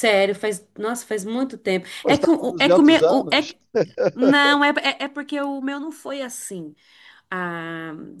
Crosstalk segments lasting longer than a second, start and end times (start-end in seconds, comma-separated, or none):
2.0-3.5